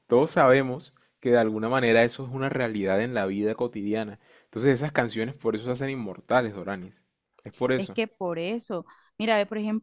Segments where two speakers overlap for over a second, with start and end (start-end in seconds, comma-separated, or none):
none